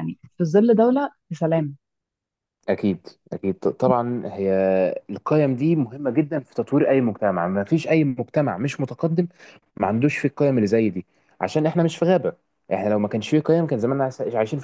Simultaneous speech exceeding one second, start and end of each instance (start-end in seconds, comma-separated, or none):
none